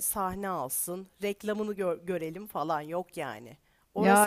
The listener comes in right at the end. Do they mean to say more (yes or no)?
no